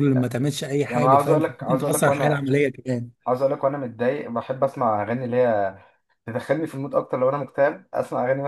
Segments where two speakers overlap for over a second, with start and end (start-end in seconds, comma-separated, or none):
0.9-2.5